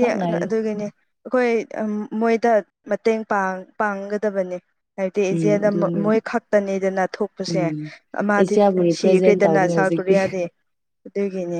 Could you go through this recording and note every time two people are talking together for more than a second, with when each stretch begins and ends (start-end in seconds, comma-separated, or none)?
8.4-10.2